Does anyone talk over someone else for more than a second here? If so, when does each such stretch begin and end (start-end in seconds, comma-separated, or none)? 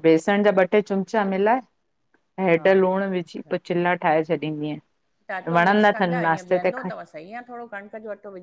none